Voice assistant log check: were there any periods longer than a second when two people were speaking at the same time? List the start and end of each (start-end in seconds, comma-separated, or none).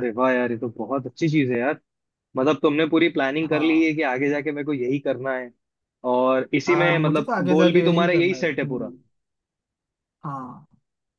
6.7-8.9